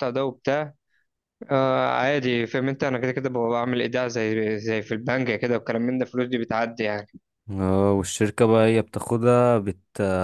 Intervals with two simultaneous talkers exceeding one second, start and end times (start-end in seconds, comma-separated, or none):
none